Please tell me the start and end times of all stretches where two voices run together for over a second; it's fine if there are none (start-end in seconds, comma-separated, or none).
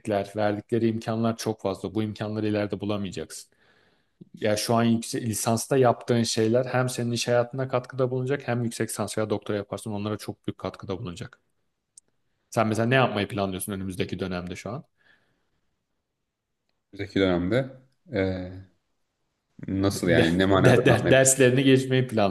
19.9-21.3